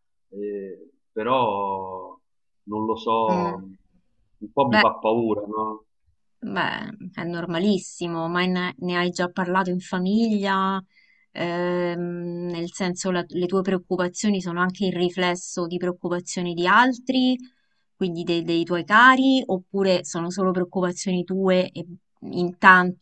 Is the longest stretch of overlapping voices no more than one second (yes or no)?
yes